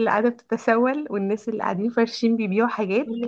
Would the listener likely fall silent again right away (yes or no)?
yes